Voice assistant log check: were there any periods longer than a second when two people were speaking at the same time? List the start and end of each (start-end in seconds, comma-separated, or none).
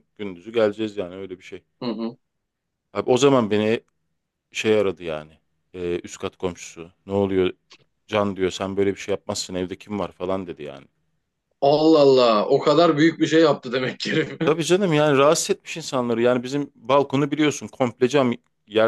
none